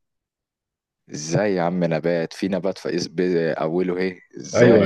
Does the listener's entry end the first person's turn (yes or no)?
yes